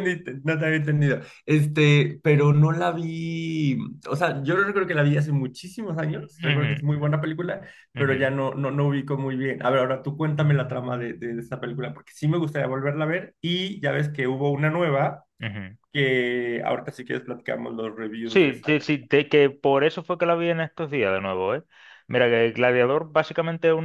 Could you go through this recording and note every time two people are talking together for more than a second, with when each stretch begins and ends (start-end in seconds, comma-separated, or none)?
none